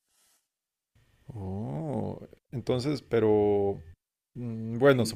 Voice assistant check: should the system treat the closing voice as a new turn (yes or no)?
no